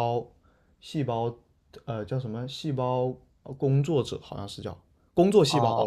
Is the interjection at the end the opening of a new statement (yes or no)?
yes